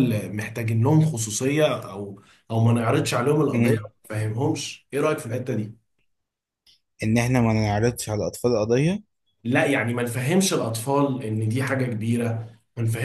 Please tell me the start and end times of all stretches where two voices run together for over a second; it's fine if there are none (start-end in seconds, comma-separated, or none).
none